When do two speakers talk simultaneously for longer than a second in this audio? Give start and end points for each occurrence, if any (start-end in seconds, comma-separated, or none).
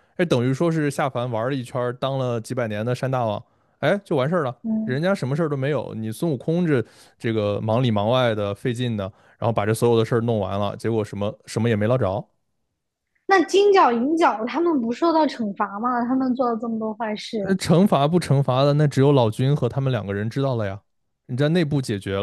none